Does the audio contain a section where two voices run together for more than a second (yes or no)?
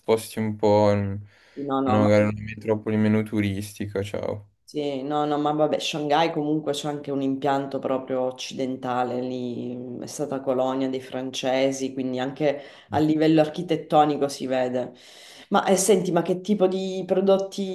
no